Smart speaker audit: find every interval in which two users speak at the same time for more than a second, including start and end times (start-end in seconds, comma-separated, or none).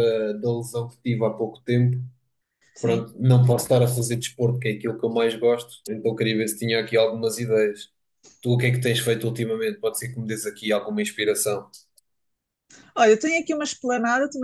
none